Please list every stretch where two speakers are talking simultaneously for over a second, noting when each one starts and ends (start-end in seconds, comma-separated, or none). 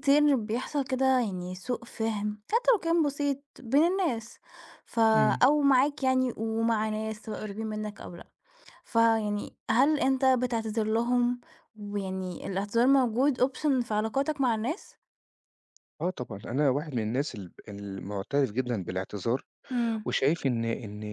none